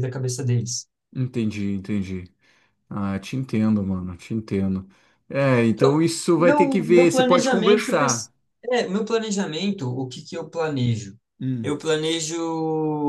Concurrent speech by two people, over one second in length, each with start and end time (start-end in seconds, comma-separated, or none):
5.7-8.3